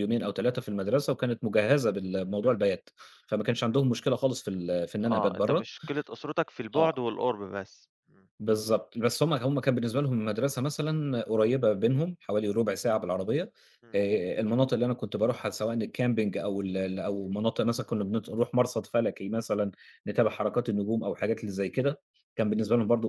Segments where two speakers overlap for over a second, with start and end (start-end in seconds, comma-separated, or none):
none